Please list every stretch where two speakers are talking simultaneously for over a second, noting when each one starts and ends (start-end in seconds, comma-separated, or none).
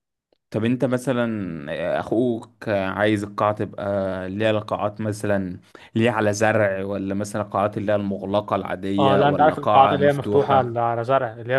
9.0-10.8